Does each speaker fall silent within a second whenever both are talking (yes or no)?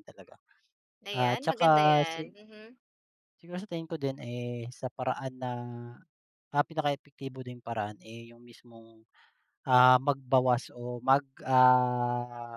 no